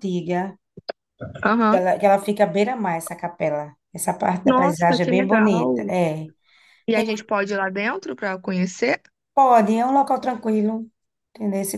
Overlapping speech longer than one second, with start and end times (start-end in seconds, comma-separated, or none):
4.5-5.9